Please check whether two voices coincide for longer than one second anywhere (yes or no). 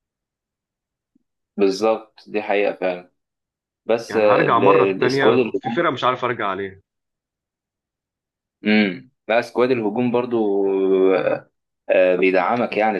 yes